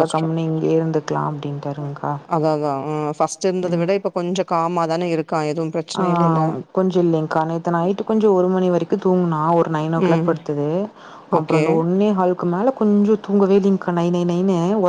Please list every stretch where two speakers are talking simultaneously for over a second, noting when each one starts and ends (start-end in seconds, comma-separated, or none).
none